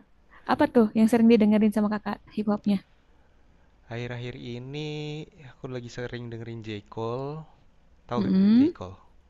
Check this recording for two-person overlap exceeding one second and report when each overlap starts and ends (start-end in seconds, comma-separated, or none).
none